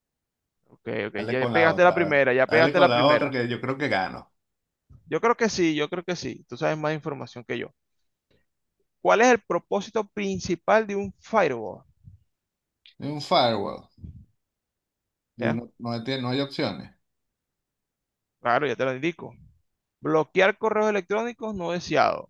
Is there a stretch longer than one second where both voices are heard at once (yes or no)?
yes